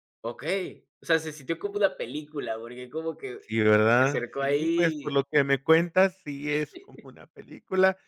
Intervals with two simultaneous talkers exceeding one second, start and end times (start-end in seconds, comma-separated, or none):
4.0-5.2